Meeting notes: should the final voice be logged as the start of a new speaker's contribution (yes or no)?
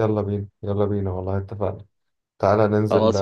no